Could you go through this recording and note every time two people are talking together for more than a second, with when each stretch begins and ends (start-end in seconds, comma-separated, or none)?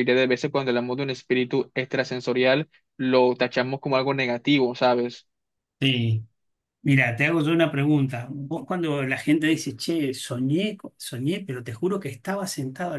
none